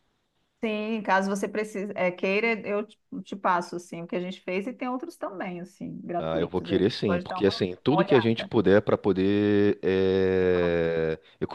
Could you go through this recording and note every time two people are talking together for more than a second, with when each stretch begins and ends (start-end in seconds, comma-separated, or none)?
6.2-8.5